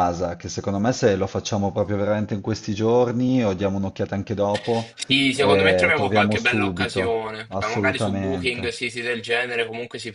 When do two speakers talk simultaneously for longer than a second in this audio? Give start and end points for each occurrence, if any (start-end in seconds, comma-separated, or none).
5.4-8.8